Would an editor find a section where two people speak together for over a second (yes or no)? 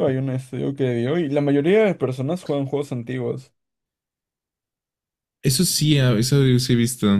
no